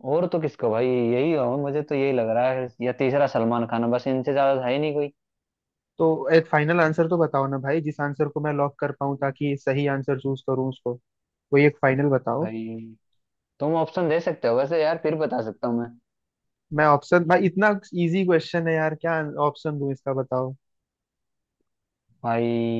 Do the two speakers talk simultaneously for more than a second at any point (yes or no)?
no